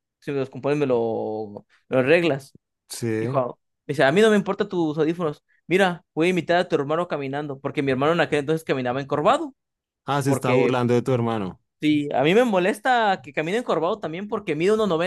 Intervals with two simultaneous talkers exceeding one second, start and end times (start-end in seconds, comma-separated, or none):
none